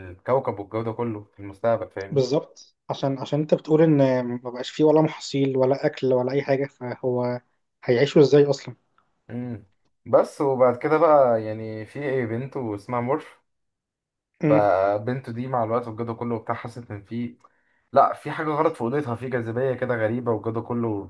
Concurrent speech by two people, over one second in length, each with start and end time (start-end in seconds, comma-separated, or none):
none